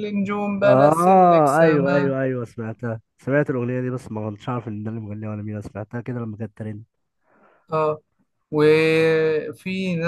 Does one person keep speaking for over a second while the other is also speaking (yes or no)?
yes